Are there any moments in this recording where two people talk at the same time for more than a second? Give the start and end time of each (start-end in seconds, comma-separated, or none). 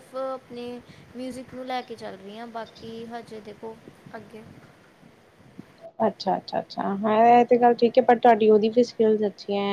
none